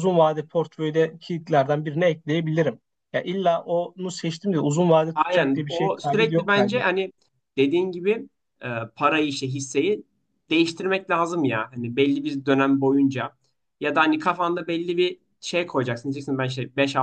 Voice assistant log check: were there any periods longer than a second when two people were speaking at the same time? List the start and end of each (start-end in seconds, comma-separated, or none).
5.1-6.8